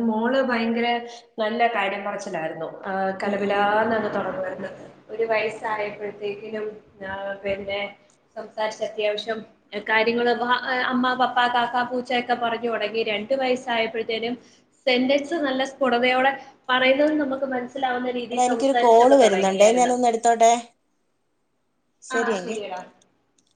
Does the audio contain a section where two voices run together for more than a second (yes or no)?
yes